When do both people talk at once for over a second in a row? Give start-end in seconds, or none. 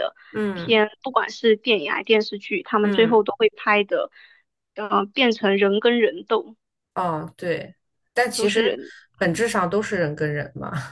none